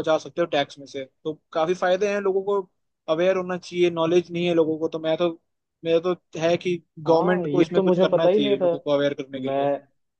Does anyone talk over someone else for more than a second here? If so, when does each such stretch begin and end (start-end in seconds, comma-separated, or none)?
7.1-8.7